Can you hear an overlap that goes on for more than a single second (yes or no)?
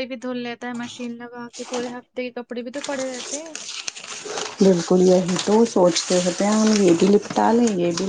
no